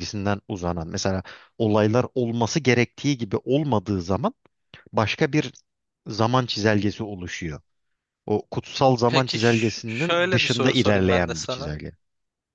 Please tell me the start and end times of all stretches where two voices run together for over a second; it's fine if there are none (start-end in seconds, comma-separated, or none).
9.1-11.7